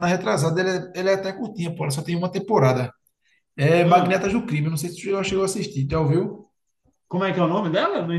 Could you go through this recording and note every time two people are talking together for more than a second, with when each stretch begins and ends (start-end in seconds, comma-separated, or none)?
none